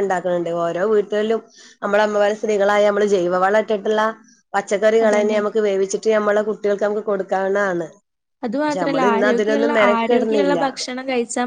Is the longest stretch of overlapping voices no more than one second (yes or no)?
no